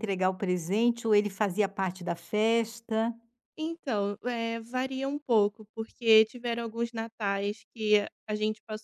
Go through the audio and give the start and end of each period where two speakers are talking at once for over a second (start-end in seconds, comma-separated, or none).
none